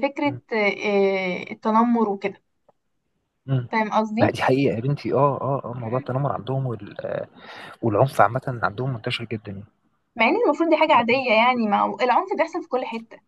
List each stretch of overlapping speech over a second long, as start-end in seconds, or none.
none